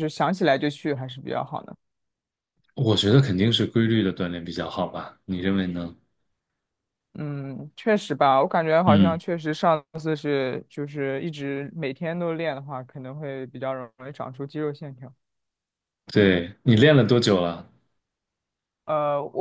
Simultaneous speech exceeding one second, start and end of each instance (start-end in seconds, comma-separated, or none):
none